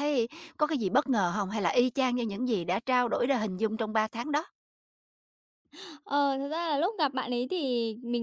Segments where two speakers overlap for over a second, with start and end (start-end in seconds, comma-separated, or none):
none